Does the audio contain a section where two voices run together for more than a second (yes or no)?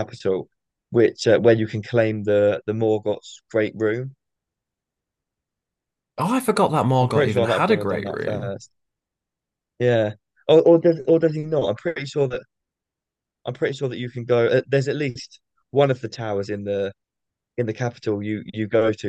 yes